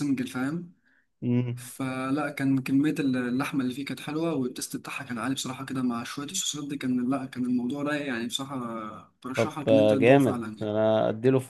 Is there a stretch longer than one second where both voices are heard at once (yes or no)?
yes